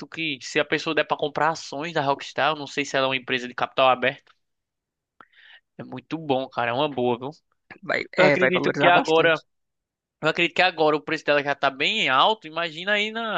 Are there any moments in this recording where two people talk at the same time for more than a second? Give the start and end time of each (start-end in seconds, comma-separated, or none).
8.2-9.4